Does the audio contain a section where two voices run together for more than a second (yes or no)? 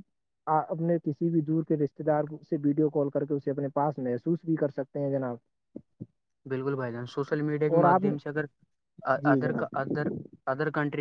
no